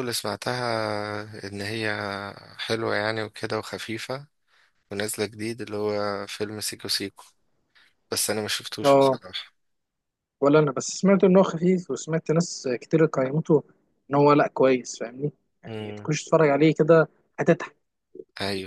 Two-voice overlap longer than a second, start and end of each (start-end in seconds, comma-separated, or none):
none